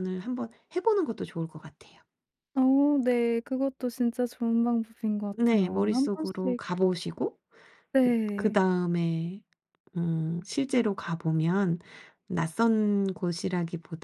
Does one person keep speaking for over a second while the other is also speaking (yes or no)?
yes